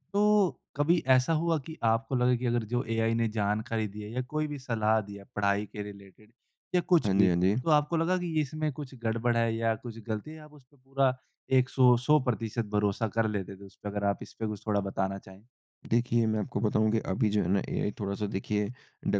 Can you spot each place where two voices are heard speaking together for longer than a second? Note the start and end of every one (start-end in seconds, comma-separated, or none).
none